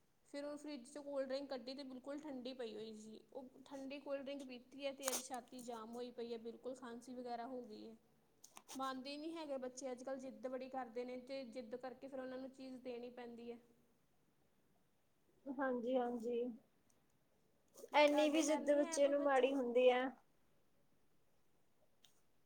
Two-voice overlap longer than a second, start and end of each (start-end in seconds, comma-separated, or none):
18.1-19.5